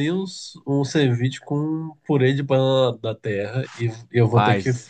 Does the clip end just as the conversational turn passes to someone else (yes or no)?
no